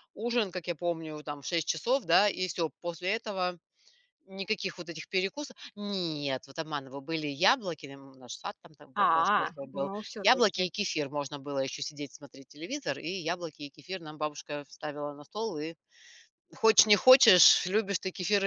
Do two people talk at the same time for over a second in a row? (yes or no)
yes